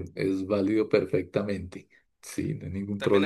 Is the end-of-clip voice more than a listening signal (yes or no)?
yes